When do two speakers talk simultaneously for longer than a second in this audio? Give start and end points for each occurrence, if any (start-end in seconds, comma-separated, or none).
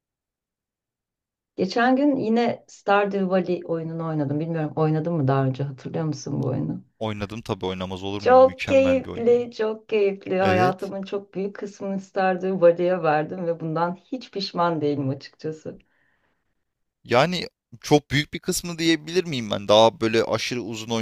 8.2-9.5